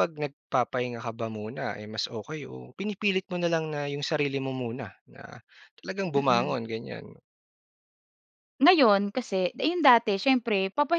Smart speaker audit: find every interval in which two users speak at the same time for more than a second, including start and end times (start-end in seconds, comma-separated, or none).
none